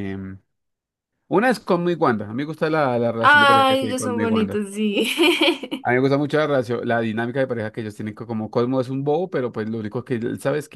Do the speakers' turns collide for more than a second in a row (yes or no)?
yes